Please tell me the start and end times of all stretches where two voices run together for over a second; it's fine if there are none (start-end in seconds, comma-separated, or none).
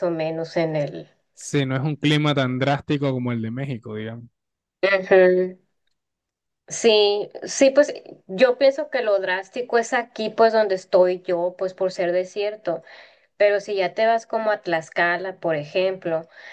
none